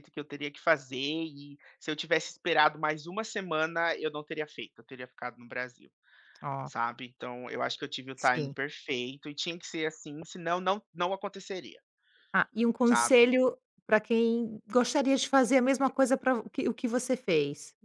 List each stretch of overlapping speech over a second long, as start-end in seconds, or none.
none